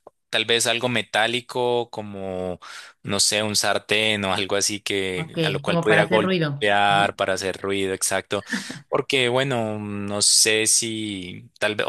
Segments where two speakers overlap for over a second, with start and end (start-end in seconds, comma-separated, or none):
5.2-7.1